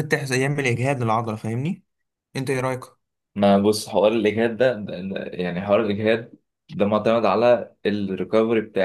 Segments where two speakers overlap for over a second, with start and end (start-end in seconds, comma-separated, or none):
none